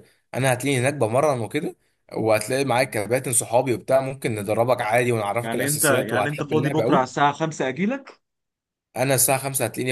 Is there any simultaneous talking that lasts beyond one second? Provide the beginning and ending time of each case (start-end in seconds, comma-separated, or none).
5.4-7.2